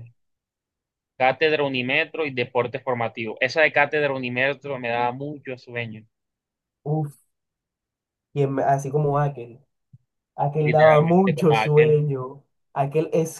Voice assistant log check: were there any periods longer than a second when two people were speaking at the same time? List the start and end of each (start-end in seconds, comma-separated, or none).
10.6-12.0